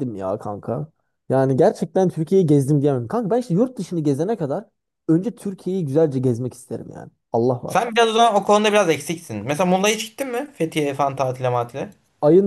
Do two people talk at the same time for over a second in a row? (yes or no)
no